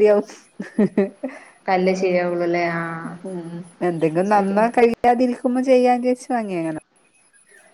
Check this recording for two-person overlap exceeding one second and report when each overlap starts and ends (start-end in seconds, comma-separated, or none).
none